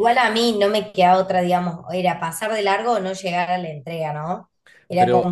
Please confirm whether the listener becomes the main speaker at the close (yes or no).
no